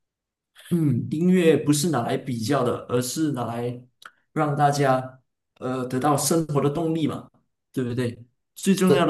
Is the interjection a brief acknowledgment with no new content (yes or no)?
yes